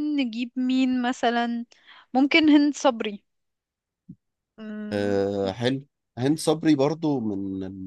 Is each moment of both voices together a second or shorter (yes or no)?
yes